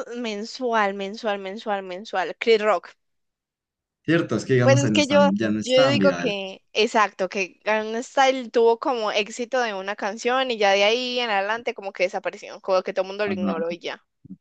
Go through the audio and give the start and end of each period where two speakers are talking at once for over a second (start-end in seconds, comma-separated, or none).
4.6-6.3